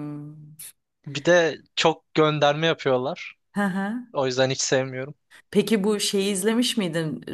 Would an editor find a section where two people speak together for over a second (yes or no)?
no